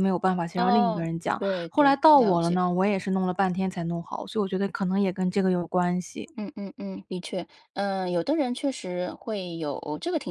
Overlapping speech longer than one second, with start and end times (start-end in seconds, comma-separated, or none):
0.6-2.6